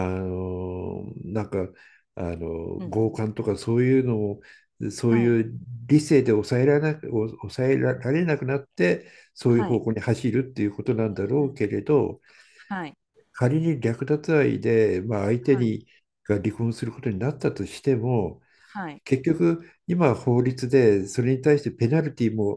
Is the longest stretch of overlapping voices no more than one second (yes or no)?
yes